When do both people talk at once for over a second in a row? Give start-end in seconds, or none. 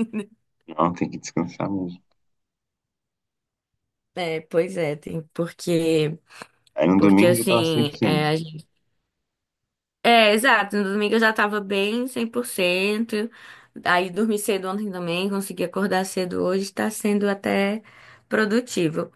7.0-8.3